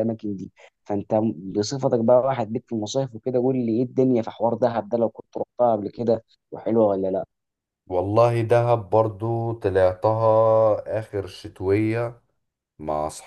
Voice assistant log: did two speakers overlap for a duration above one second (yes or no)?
no